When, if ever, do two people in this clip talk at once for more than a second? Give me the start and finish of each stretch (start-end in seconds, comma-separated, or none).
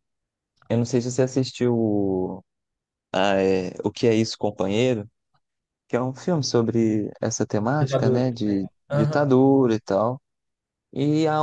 7.8-9.3